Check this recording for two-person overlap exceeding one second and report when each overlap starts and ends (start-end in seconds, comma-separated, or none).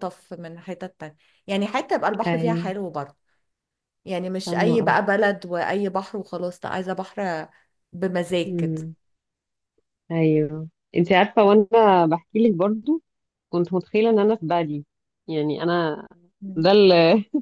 none